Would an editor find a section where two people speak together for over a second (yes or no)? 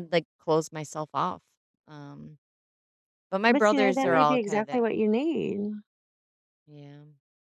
yes